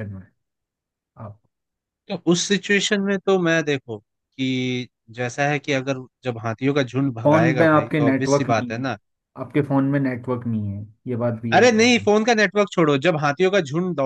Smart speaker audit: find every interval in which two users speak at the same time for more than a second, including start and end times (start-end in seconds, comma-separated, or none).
7.2-8.8